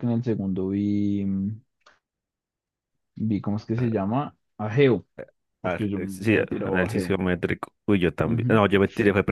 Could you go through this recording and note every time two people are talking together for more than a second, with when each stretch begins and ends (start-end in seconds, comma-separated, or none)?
5.6-7.2